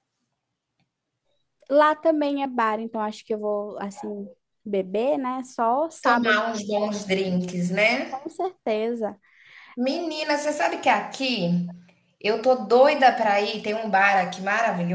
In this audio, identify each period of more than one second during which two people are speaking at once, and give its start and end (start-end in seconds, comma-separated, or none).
none